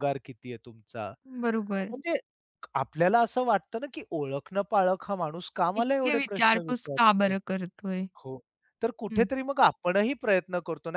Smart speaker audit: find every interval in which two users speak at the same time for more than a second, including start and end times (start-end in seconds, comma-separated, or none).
5.8-7.3